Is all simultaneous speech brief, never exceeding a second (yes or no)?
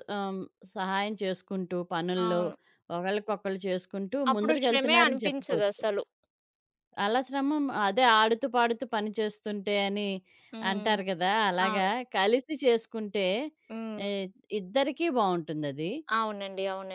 no